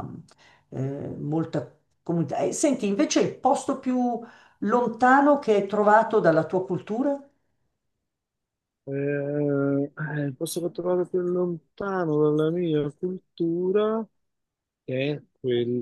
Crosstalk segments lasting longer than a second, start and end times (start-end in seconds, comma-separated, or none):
none